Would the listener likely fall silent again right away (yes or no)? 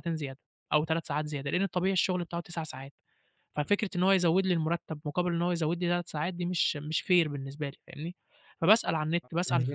yes